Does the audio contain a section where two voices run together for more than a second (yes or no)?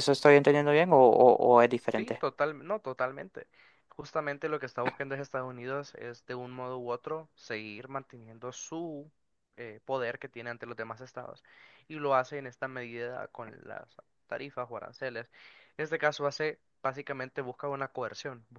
no